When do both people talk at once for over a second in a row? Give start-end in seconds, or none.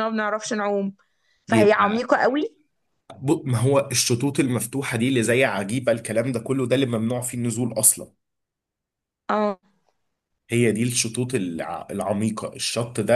none